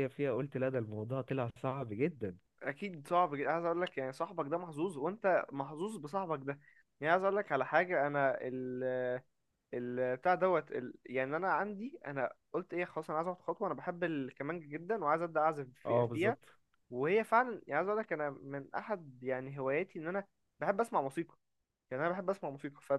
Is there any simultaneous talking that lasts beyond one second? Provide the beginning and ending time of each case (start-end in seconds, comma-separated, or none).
none